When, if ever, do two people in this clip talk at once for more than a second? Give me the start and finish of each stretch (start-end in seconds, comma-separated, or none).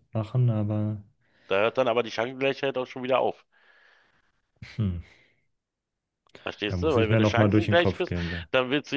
6.7-8.4